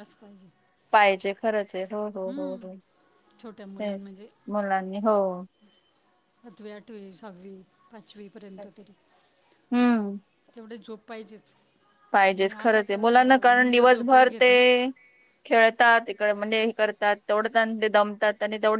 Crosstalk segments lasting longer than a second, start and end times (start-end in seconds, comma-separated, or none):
12.3-14.5